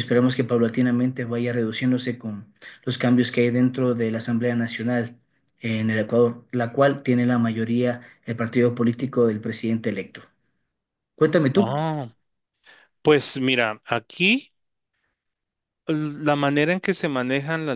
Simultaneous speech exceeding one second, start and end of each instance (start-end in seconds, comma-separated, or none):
none